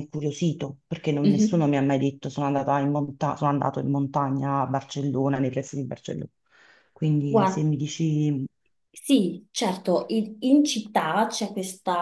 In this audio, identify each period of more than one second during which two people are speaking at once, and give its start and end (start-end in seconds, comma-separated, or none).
none